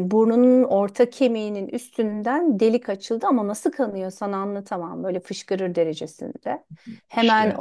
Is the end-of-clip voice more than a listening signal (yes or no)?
no